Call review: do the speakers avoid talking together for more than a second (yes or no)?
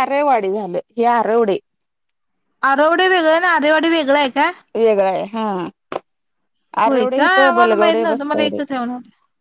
no